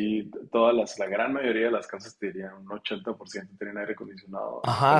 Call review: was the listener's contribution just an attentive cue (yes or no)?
no